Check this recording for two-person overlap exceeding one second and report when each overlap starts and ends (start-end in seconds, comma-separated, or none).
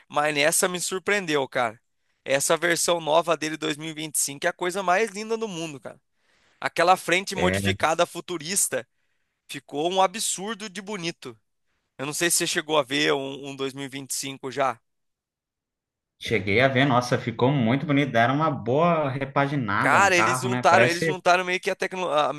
19.8-21.1